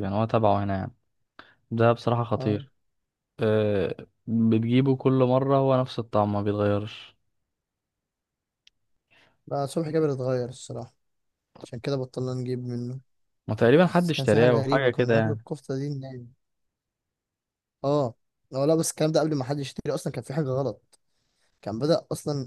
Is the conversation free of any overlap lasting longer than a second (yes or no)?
no